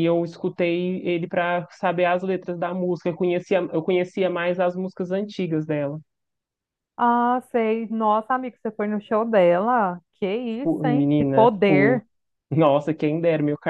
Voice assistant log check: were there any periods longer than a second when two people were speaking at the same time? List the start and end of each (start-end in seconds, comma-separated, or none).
10.6-12.0